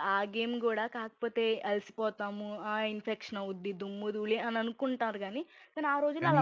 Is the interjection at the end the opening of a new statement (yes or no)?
no